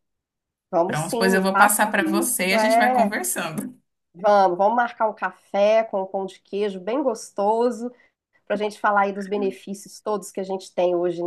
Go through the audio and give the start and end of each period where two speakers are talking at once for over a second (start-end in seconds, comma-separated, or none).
0.8-3.2